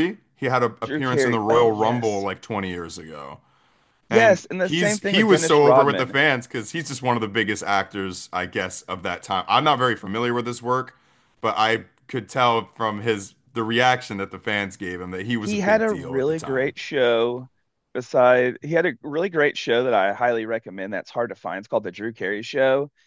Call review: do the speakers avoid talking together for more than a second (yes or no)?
no